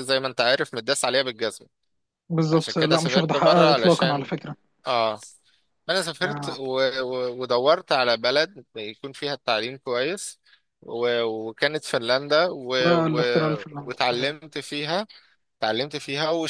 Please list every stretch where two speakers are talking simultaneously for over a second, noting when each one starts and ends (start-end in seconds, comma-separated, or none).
2.5-4.3